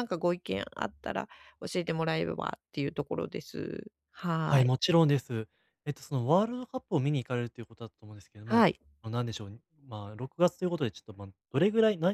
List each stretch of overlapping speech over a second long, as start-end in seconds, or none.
none